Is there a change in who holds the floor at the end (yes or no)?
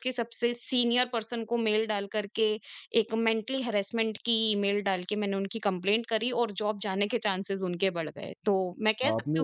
yes